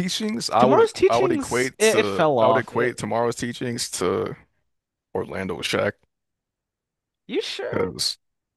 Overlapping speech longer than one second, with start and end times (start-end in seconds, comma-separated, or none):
0.6-3.0